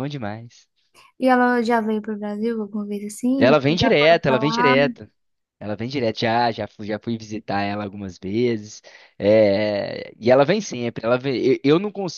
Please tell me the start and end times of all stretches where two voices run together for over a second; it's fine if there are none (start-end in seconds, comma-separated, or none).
3.4-4.7